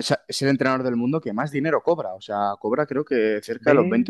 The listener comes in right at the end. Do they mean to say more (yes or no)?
no